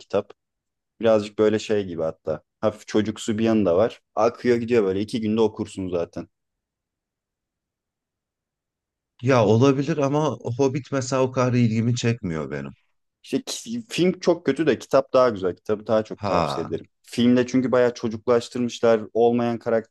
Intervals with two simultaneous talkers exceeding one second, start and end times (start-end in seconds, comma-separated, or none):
none